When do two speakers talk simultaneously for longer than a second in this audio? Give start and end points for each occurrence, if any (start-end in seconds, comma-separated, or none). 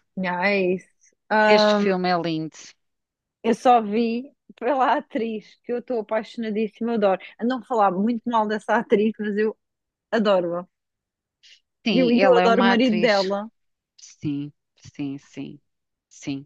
11.9-13.3